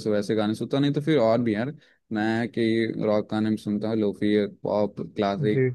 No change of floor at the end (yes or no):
yes